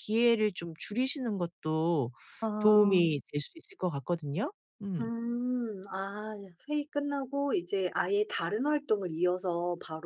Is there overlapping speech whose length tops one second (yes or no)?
no